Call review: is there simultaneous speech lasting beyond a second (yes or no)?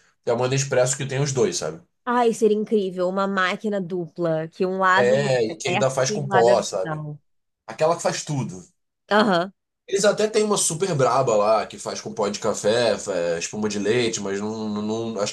yes